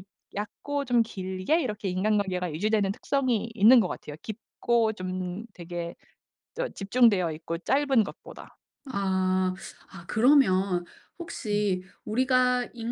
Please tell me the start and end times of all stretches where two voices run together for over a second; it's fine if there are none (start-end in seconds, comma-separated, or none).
none